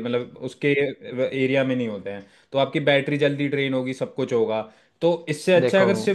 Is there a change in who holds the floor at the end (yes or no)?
no